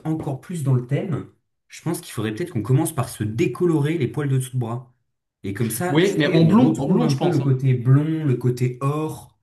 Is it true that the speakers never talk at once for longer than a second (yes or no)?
no